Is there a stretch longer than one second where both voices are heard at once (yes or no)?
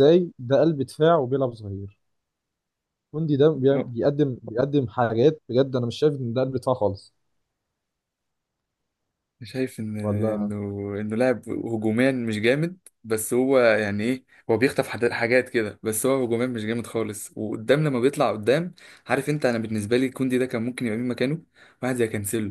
no